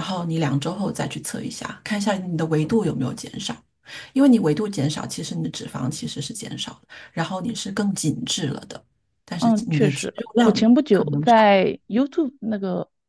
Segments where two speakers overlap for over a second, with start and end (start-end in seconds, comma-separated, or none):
9.4-11.3